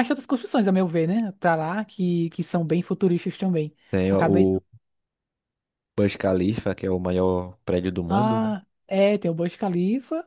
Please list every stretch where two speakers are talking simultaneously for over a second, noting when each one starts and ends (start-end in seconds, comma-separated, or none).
none